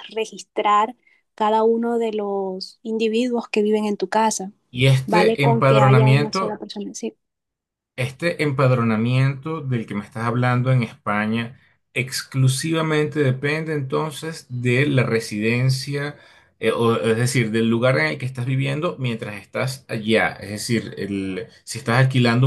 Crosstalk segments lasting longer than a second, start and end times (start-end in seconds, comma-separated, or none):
5.1-6.6